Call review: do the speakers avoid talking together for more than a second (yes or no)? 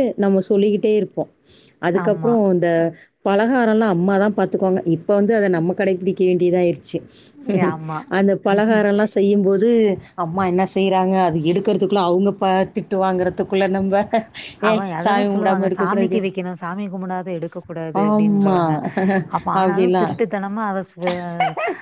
no